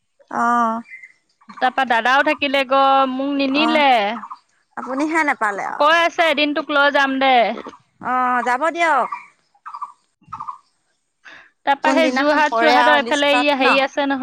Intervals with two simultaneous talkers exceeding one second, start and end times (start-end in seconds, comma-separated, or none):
11.8-13.7